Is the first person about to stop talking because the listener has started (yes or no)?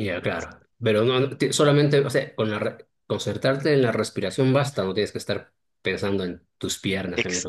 yes